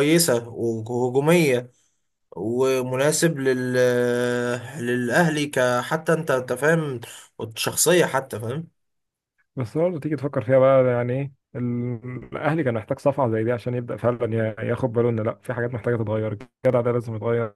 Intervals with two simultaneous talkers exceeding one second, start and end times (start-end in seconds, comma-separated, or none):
none